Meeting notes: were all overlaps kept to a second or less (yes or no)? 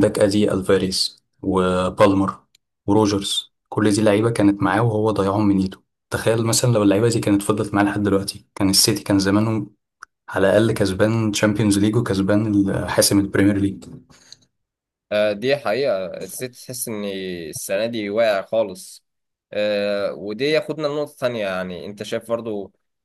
yes